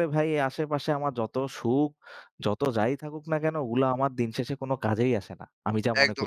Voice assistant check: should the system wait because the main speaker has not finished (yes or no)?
no